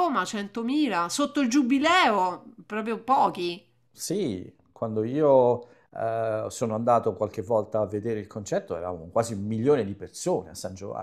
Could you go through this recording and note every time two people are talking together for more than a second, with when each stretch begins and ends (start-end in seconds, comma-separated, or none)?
none